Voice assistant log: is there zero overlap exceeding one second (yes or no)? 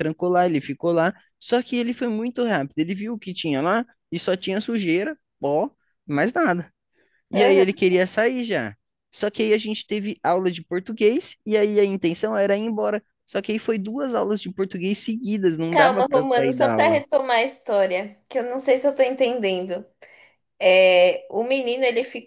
no